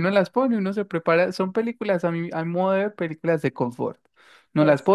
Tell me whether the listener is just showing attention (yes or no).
yes